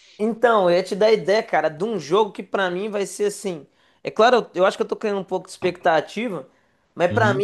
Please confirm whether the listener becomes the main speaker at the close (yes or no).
no